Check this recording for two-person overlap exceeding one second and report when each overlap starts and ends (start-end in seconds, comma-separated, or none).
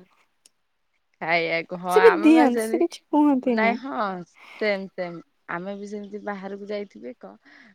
1.9-3.7